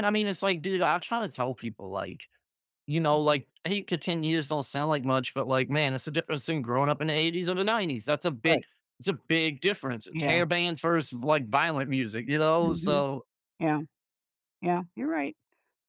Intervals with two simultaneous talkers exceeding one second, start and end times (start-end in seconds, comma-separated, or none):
none